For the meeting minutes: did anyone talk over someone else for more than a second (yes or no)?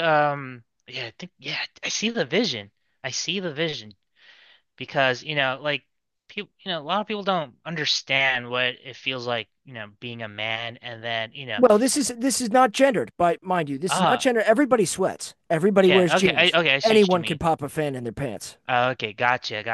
yes